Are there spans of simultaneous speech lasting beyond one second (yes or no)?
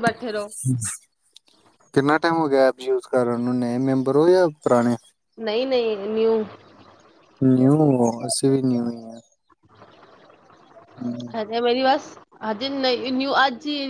no